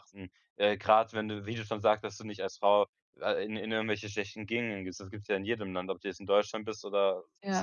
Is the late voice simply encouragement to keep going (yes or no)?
yes